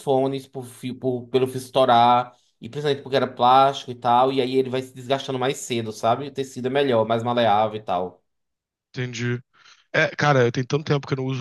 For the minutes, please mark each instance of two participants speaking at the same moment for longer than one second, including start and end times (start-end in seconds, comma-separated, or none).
none